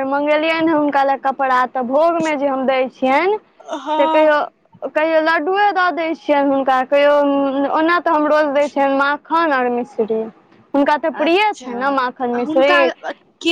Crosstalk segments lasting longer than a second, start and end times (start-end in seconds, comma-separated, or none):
11.2-12.7